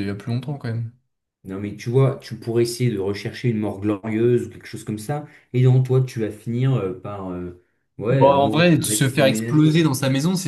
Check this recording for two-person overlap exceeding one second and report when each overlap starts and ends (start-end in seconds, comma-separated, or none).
8.1-9.9